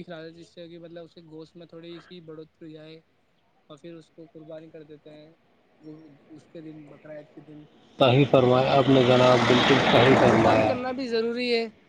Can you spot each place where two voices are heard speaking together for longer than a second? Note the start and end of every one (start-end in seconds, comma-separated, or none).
none